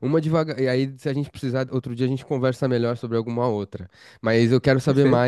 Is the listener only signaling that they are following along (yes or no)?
yes